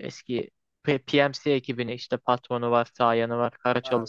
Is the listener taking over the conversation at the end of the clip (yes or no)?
yes